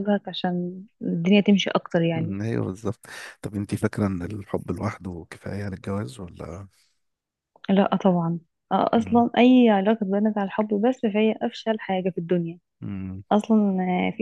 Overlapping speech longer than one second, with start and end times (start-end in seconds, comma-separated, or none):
none